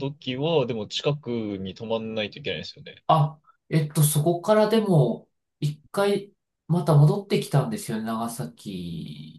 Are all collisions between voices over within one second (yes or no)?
yes